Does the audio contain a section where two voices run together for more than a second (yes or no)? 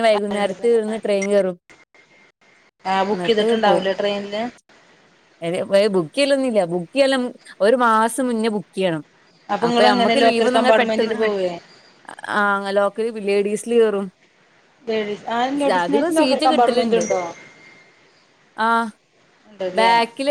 yes